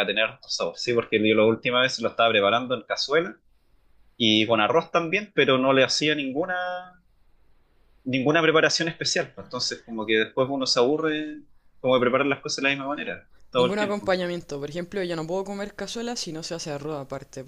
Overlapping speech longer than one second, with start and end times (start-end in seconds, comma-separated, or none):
none